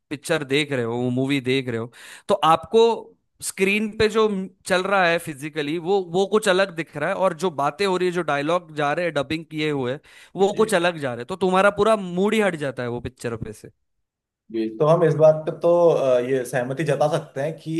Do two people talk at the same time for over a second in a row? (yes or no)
no